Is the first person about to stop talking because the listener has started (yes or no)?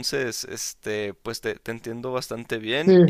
yes